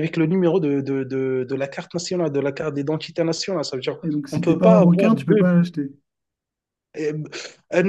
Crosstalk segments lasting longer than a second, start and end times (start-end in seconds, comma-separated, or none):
4.0-5.4